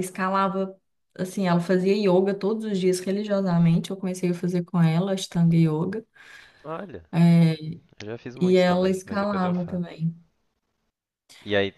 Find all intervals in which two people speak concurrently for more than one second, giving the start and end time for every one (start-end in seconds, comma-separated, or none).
8.4-9.8